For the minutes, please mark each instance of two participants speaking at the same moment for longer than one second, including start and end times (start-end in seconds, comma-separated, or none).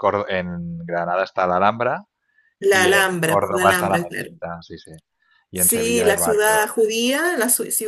2.7-4.3, 5.5-6.9